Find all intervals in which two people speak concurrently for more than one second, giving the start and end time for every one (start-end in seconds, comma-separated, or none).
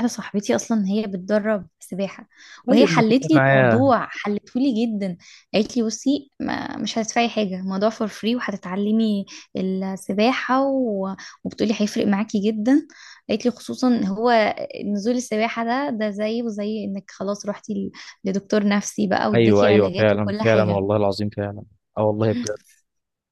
2.7-3.9, 19.3-20.8